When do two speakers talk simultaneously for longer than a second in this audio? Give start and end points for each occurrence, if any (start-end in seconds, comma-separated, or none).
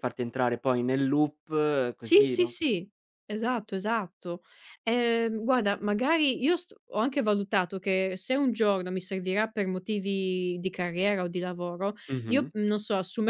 none